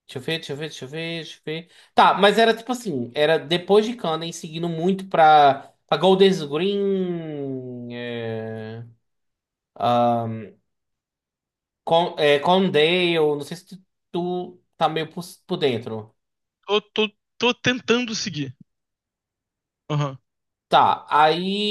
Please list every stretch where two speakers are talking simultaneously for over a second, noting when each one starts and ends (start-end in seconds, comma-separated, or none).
none